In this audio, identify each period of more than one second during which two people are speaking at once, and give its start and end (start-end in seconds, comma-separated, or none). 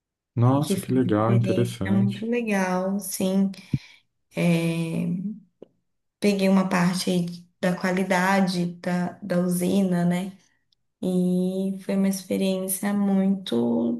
0.6-2.3